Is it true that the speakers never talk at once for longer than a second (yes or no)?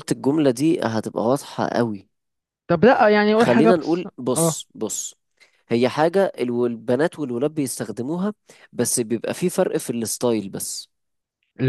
no